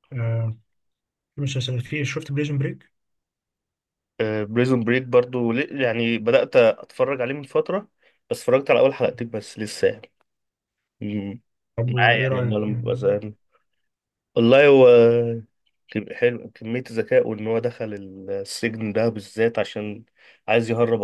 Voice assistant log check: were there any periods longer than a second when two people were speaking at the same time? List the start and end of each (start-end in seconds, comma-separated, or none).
11.9-13.2